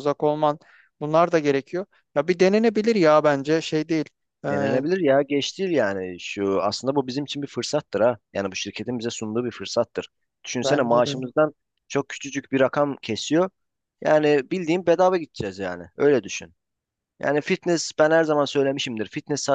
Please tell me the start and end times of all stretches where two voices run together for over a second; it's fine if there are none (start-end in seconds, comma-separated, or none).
none